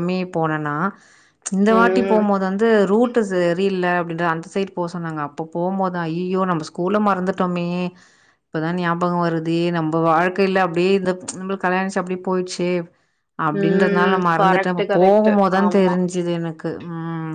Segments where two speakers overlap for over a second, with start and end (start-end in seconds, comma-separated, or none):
13.6-15.9